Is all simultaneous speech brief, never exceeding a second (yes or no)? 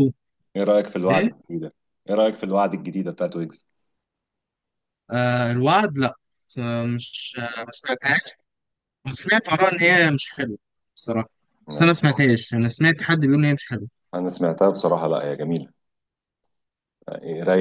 yes